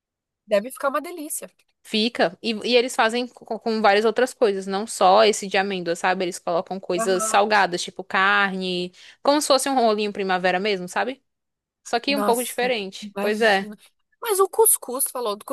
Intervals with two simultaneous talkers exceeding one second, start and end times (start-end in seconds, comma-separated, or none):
12.1-13.7